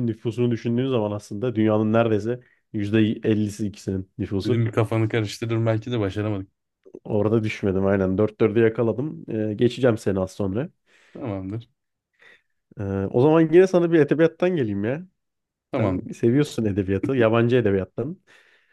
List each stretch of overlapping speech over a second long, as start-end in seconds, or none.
none